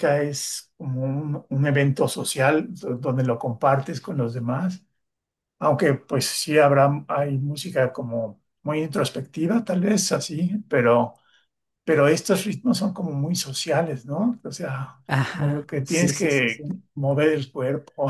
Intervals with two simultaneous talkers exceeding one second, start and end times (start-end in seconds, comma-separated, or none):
15.1-16.8